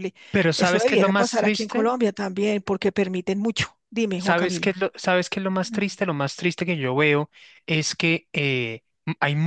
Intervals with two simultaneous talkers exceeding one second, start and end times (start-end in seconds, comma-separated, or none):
0.6-1.9